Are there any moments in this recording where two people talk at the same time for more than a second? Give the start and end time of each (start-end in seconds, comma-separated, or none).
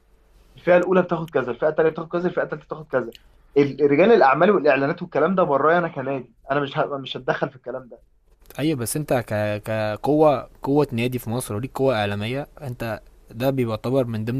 none